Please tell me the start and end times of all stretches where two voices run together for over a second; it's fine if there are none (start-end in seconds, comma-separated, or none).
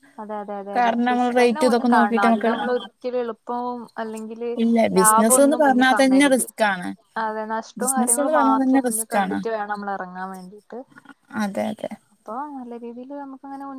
0.8-2.5, 5.0-6.5, 7.8-9.4